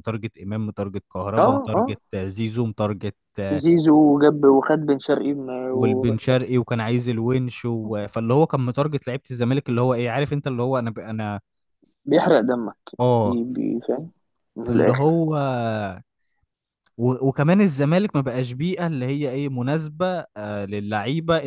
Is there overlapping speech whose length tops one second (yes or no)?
no